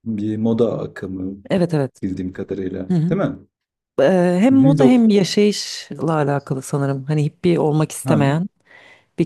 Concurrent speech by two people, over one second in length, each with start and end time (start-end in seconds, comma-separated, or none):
none